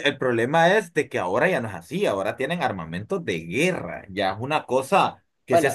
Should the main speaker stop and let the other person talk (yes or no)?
no